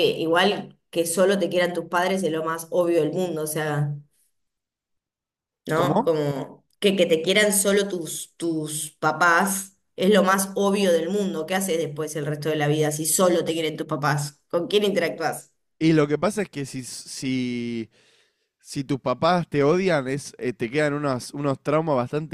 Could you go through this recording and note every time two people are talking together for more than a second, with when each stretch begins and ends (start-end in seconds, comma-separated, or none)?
none